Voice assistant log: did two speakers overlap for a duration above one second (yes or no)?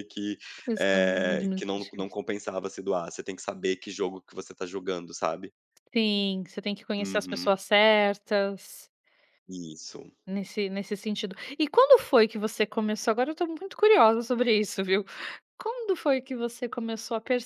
yes